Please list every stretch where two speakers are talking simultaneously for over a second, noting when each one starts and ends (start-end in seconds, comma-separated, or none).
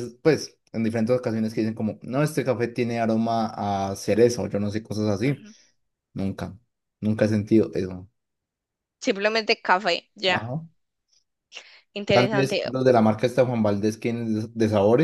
none